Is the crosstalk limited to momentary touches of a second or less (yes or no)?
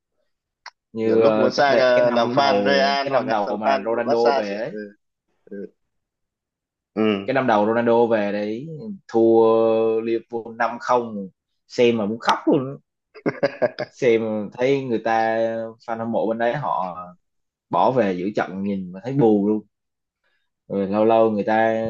no